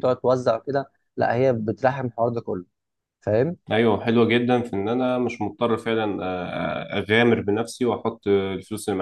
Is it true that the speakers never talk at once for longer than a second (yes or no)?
yes